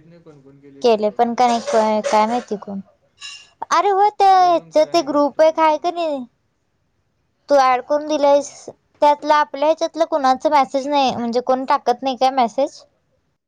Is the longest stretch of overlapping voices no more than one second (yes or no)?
no